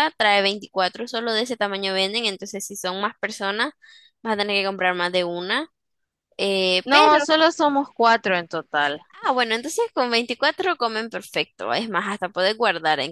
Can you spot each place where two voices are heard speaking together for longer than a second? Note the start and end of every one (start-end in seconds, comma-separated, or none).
none